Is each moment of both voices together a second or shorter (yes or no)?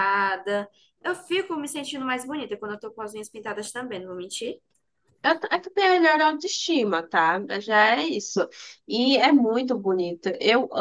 yes